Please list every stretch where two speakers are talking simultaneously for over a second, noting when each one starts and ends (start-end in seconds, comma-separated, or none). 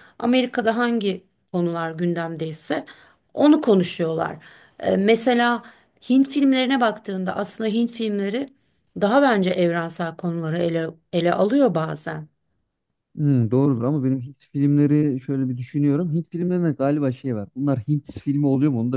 none